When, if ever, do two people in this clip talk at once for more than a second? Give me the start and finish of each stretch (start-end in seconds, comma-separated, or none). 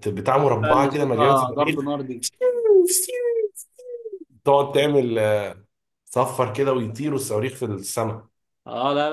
0.6-1.9